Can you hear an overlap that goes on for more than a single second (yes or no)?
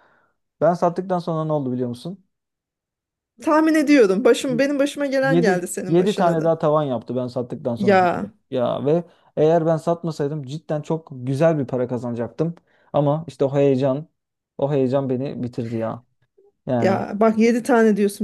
yes